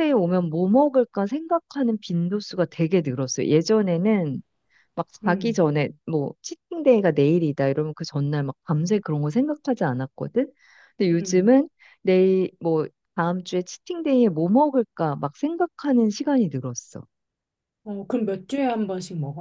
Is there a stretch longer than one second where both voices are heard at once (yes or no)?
no